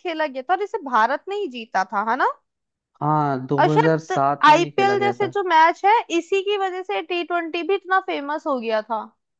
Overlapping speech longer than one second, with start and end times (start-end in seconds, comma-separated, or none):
3.6-5.3